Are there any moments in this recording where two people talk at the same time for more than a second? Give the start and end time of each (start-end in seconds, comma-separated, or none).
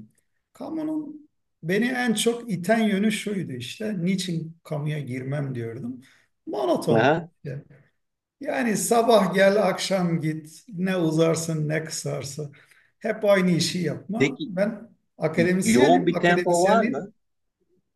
15.6-17.1